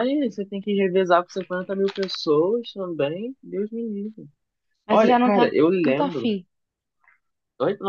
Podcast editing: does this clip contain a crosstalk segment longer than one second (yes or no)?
yes